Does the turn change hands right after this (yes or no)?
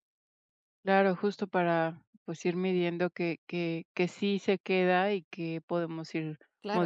yes